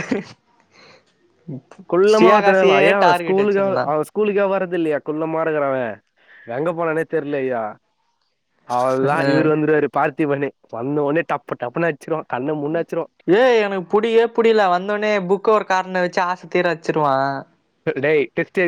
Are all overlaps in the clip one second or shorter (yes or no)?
no